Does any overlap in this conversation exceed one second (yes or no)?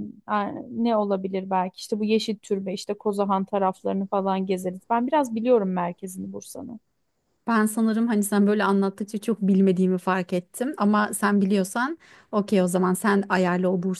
no